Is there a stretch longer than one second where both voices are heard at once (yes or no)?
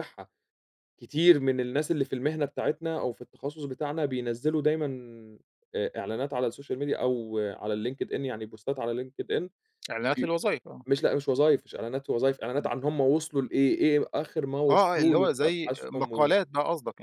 yes